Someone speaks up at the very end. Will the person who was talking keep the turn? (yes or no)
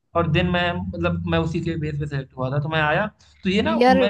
yes